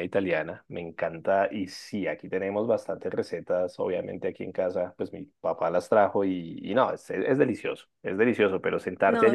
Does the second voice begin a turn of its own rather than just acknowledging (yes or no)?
no